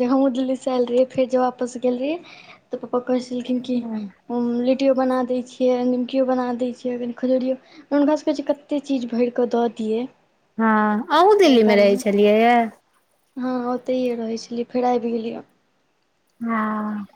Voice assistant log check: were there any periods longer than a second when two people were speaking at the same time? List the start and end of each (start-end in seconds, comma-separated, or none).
none